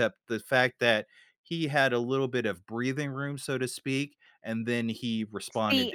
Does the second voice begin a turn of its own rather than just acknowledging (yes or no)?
yes